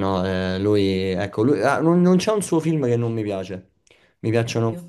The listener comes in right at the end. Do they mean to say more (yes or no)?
no